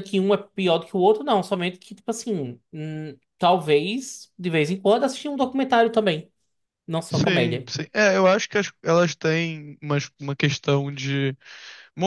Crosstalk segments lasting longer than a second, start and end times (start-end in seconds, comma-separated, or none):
none